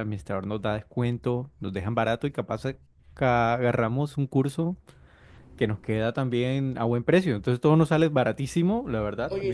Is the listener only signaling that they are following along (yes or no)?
yes